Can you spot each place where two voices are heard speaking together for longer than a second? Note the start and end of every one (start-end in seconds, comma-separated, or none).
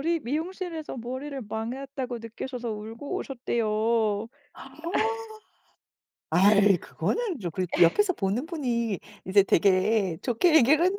none